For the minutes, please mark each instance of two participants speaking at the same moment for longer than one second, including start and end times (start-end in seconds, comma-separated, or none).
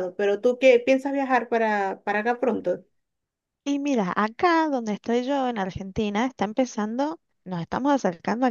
none